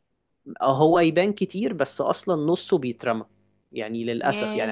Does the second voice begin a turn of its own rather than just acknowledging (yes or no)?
no